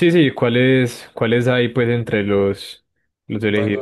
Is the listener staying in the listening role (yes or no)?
no